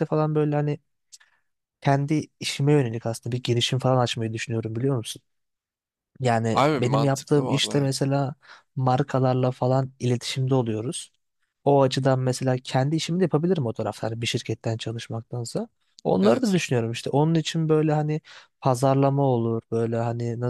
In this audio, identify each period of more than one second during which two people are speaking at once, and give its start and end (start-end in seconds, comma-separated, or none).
6.5-7.9